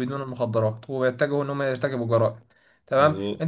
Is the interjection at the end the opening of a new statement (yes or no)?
no